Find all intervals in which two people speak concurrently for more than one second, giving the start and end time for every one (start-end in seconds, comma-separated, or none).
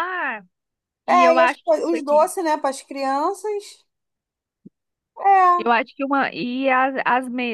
1.1-2.3